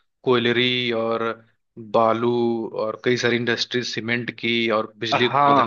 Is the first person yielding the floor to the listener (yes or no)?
yes